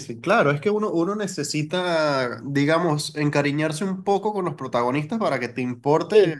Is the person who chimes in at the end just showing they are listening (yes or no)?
yes